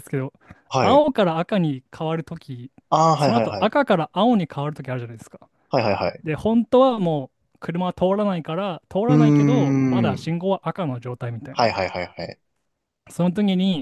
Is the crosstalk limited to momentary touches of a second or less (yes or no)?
no